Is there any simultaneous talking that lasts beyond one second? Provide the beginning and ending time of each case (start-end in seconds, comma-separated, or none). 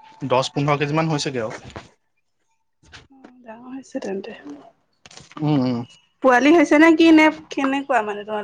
none